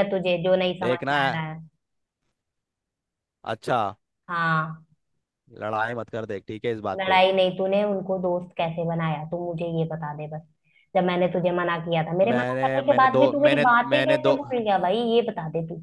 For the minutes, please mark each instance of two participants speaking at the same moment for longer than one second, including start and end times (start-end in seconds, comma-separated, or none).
12.2-14.3